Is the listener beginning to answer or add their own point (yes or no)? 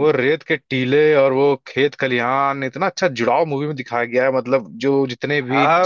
yes